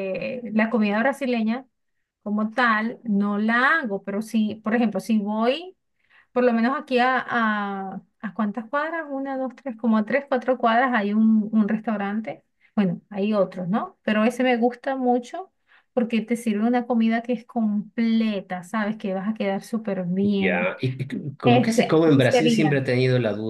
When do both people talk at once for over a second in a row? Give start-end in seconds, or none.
21.4-22.8